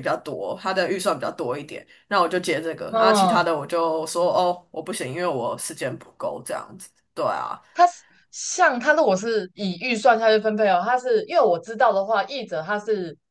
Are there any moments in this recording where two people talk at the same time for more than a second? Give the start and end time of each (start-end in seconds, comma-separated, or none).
none